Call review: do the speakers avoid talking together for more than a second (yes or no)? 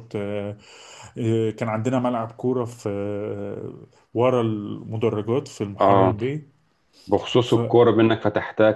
yes